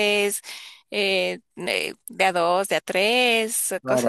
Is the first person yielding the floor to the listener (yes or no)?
yes